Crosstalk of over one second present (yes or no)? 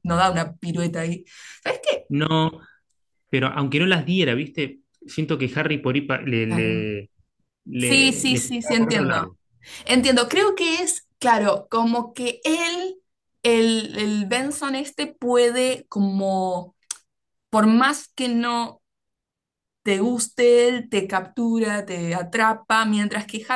yes